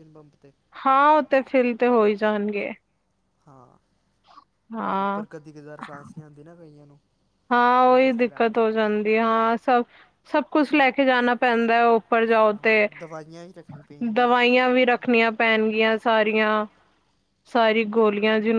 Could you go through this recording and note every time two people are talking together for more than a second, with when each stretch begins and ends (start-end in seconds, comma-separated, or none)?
7.8-9.5